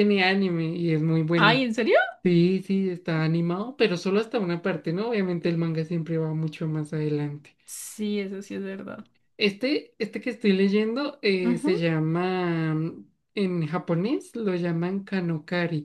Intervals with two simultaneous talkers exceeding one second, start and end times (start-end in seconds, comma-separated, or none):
none